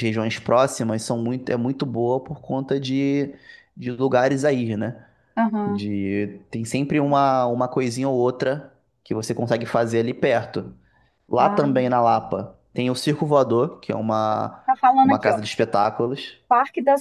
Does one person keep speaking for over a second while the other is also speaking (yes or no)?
no